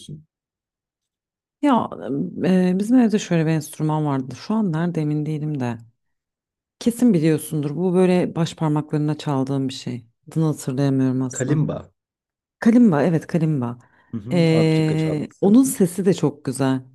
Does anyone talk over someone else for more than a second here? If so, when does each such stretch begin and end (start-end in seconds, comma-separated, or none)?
14.3-15.6